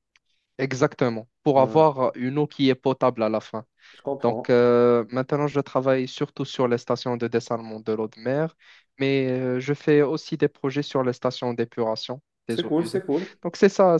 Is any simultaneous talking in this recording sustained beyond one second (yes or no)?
no